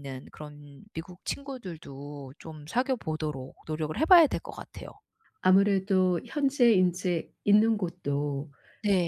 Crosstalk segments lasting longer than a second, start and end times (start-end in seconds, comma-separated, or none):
none